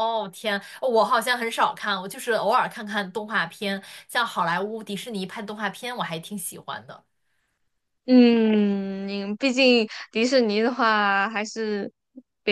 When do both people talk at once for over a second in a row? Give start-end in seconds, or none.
none